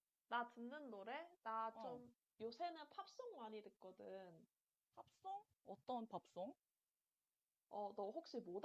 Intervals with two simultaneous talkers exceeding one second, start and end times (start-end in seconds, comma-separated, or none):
none